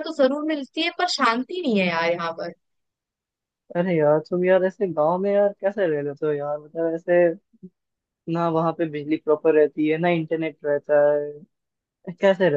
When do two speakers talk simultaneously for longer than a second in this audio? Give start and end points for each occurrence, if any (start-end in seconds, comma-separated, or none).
none